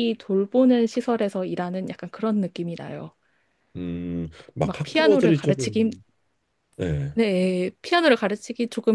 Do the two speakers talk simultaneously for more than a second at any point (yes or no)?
yes